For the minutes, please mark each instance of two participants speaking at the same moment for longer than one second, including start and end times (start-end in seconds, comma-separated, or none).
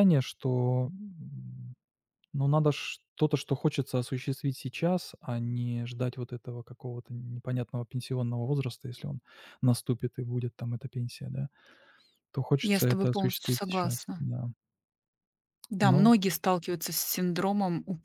12.6-14.3